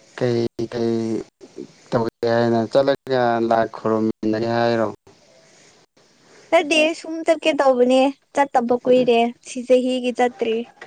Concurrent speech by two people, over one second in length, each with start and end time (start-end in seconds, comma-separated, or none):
none